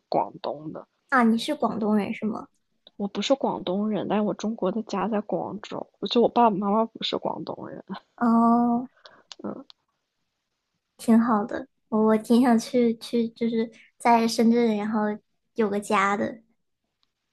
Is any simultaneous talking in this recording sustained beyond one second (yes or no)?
no